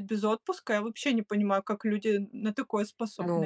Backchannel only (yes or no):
no